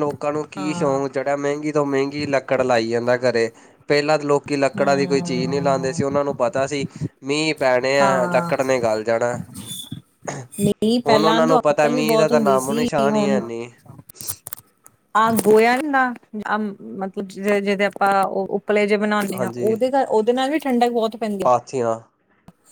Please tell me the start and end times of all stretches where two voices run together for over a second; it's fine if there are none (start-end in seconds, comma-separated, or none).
4.8-6.0